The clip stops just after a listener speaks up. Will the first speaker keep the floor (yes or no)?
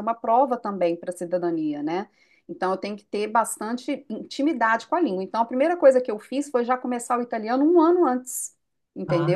no